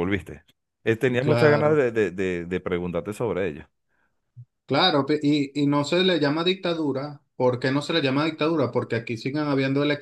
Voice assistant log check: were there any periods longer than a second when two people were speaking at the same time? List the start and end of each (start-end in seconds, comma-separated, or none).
none